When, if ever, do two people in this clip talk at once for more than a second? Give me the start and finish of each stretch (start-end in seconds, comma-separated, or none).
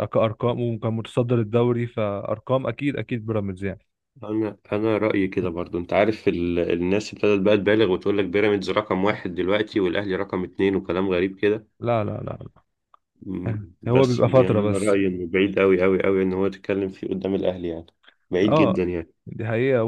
13.4-15.0